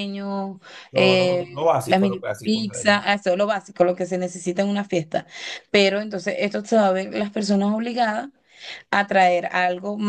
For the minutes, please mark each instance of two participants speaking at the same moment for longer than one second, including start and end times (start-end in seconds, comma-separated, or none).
0.9-2.7